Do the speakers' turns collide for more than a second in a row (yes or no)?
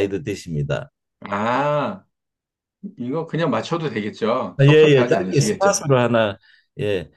yes